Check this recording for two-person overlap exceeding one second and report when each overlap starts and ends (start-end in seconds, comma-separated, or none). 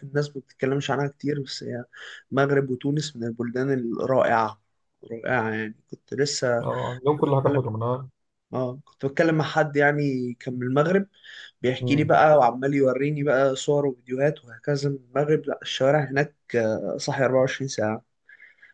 none